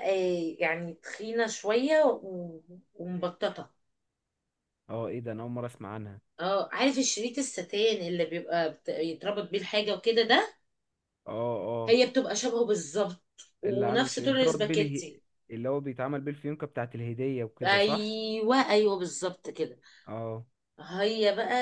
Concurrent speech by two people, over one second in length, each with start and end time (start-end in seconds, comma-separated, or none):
13.7-15.2